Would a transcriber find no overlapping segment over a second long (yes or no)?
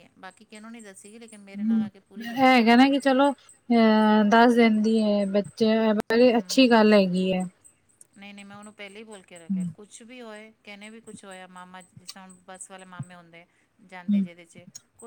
yes